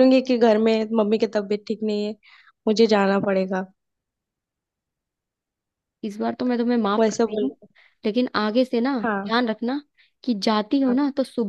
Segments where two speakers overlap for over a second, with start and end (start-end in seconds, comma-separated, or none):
none